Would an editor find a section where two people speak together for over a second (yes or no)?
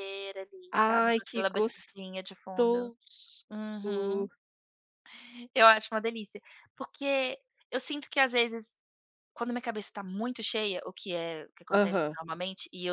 yes